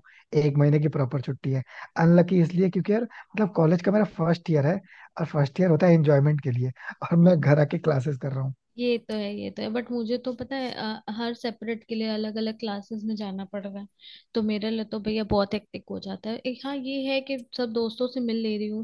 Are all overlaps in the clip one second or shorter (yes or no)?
yes